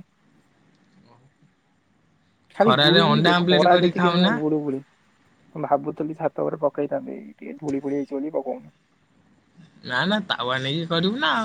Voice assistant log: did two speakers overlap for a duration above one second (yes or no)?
yes